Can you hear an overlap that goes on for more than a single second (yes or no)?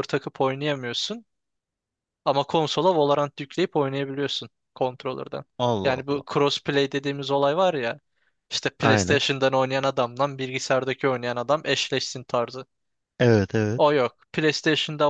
no